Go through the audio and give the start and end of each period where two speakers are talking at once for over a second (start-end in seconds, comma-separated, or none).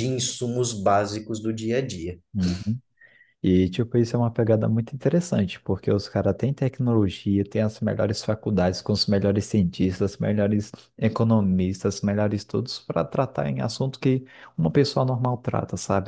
none